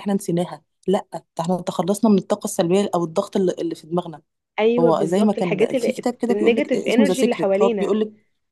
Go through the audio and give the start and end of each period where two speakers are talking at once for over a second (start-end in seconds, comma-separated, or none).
4.8-8.0